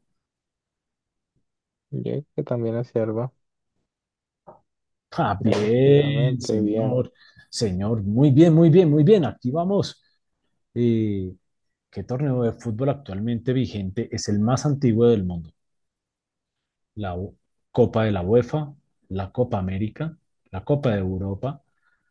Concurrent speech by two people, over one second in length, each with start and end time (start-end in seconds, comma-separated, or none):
5.4-7.0